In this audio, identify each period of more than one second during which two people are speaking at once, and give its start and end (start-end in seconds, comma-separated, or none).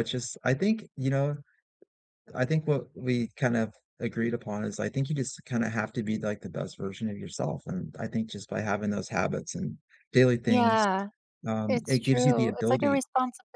11.7-13.0